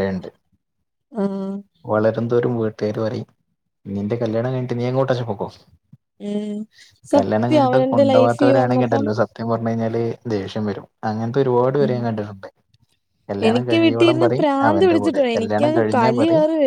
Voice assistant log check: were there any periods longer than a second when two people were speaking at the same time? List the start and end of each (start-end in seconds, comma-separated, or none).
7.2-9.1, 13.5-15.8